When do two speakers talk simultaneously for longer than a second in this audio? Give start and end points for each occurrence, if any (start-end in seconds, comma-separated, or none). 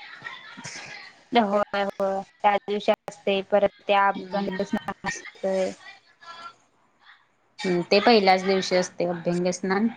none